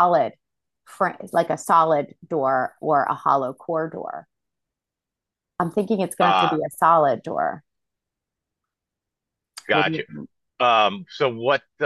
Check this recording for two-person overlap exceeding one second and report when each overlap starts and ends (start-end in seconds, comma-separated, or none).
none